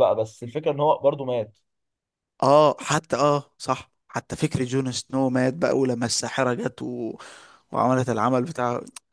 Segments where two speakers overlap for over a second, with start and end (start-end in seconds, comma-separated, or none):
none